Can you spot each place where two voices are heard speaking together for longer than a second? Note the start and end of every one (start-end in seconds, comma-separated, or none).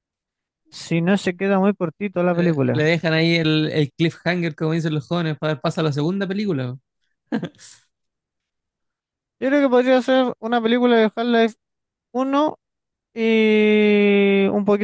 none